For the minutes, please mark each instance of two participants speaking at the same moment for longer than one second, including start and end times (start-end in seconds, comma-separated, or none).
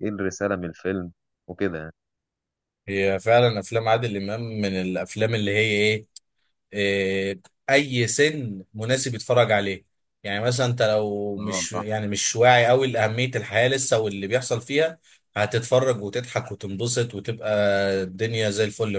none